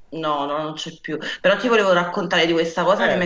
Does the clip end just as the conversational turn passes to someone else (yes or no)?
no